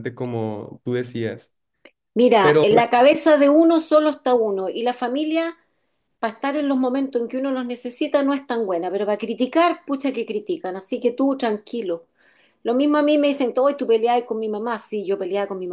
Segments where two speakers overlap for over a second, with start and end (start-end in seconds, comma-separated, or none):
none